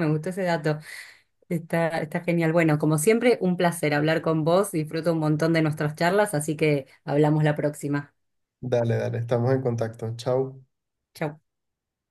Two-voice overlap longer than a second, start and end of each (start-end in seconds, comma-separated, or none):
none